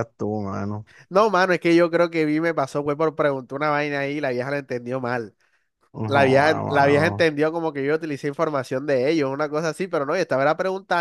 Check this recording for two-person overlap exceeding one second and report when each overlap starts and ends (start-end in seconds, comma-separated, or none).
6.0-7.3